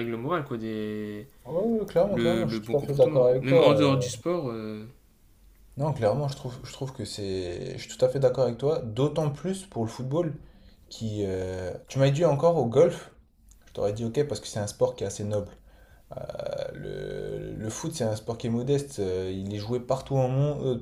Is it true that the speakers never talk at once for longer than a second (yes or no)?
no